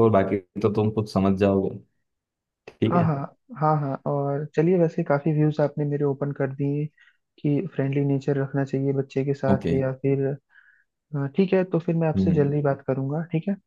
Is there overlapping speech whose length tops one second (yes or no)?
no